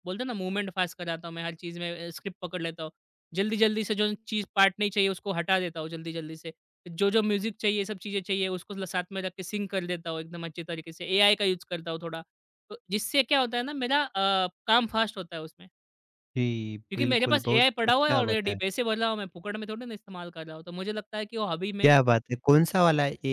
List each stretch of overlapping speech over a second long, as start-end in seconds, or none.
16.9-18.8